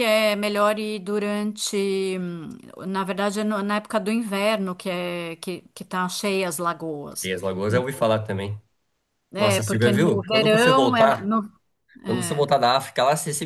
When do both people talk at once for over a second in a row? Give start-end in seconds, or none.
9.5-11.3